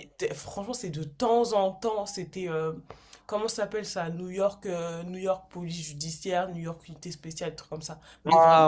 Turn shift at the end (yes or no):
yes